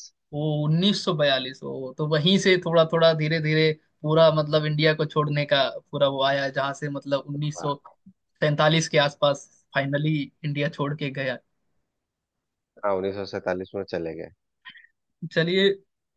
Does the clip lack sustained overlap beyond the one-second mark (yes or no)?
yes